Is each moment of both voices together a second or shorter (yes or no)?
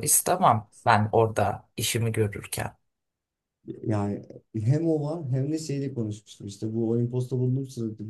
yes